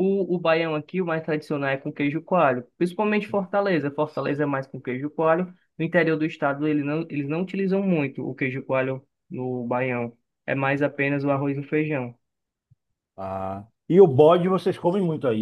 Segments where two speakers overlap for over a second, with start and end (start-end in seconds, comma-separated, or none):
none